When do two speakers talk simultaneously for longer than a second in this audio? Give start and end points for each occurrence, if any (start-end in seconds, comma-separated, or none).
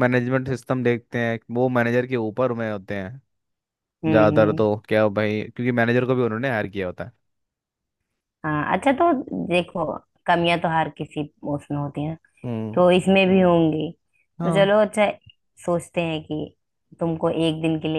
none